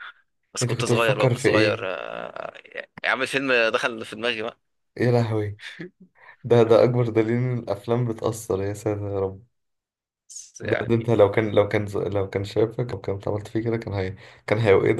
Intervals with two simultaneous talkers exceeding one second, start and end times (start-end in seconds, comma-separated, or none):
0.6-1.9